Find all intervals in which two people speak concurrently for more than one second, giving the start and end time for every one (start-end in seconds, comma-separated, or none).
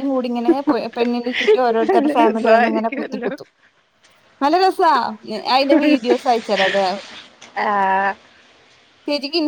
1.9-3.3